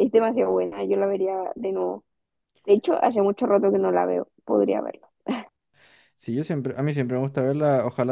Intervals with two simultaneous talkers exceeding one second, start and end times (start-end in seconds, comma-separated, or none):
none